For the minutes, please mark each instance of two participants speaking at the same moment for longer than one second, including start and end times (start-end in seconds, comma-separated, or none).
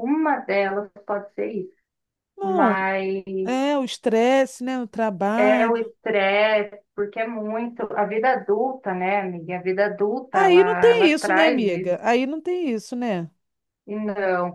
10.3-12.0